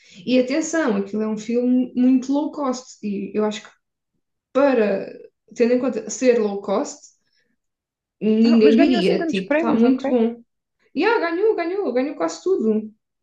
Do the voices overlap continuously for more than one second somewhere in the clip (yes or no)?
yes